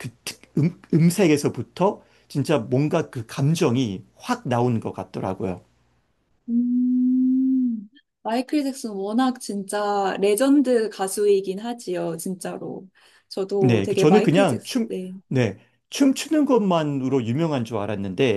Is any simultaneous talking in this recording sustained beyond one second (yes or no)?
yes